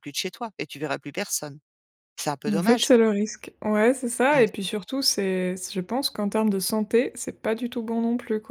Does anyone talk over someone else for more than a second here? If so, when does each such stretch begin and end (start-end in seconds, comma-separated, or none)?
none